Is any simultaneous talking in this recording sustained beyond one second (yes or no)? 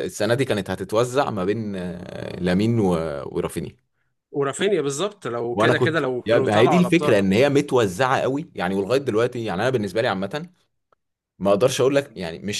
yes